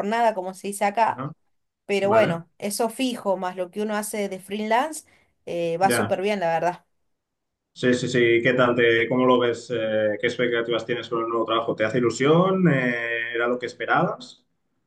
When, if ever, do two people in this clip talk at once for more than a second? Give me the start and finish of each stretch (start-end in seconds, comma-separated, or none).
none